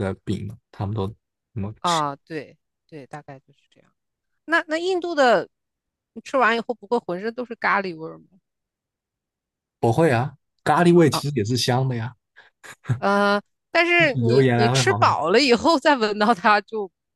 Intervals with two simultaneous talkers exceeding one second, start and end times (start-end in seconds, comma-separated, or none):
14.0-15.2